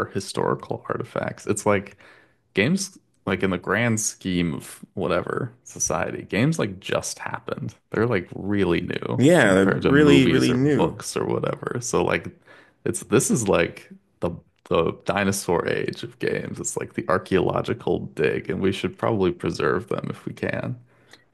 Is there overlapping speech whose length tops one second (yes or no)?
yes